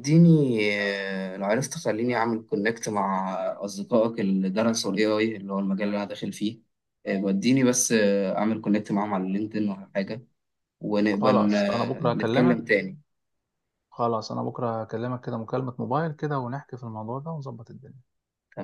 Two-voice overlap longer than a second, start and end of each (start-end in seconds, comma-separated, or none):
11.1-12.6